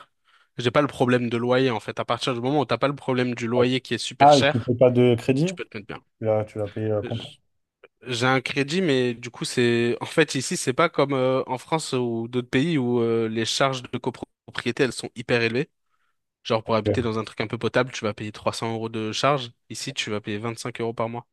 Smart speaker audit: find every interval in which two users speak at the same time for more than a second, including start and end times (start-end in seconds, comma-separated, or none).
none